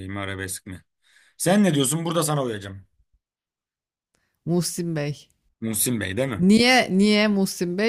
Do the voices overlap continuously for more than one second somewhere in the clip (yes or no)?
no